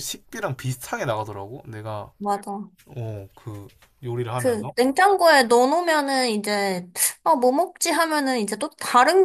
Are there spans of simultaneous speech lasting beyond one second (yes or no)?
no